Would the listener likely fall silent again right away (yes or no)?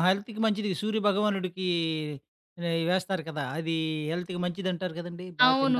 no